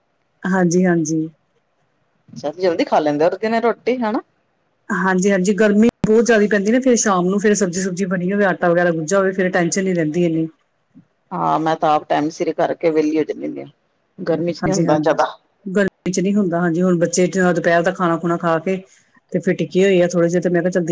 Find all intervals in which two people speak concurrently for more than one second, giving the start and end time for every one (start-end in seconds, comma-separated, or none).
none